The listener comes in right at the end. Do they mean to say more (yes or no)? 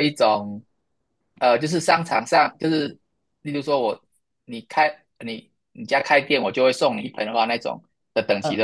yes